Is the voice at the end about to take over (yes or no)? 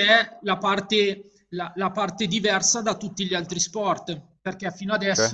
no